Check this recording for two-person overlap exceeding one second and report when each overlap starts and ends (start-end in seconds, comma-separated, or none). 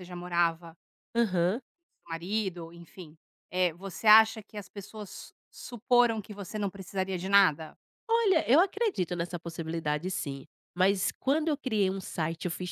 none